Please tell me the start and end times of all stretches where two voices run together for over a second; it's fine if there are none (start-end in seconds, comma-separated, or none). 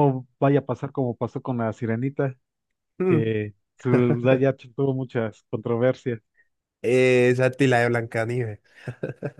none